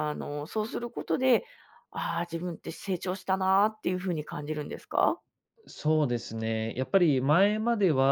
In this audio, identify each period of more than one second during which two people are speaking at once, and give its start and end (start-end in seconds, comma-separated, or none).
none